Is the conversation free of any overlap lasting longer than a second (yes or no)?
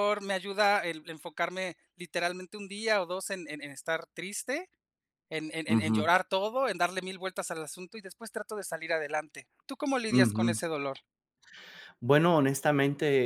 yes